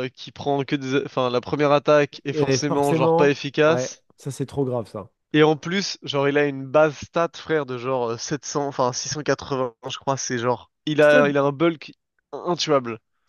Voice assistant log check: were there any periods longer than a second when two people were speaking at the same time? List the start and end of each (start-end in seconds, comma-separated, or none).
2.3-4.0